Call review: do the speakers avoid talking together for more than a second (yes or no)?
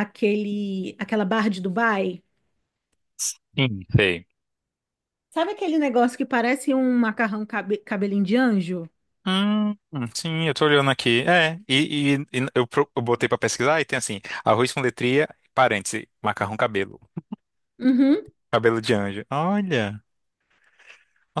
yes